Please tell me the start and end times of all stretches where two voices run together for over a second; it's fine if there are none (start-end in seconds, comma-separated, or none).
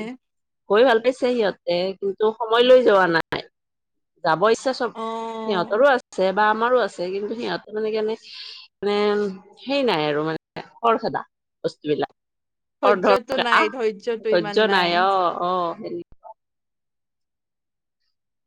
12.8-14.6